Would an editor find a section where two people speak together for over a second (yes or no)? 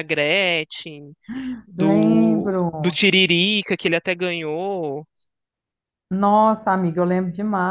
yes